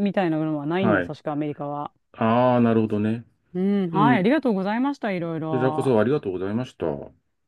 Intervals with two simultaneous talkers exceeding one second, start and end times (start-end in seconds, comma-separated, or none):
none